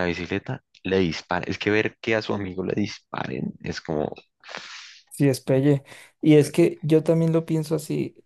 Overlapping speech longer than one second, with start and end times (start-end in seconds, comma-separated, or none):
none